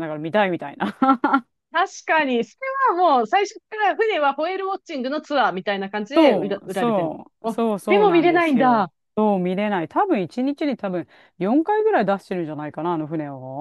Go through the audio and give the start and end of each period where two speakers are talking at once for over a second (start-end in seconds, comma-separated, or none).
6.2-8.9